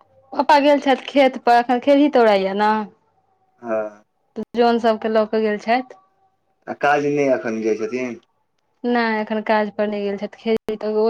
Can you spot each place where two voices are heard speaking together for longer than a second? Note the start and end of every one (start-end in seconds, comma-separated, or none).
none